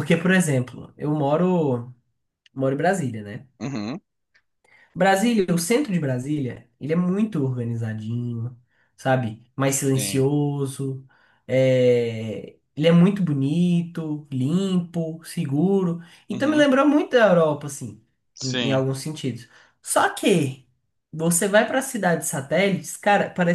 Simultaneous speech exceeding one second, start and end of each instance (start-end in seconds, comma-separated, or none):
none